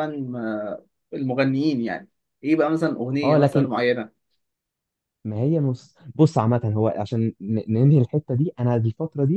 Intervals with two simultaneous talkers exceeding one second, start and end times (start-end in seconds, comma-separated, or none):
none